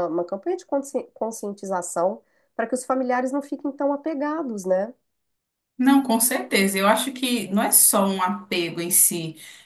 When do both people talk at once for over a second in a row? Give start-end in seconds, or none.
none